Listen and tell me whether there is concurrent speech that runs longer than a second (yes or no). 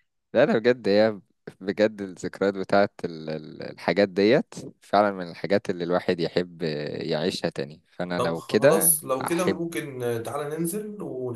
yes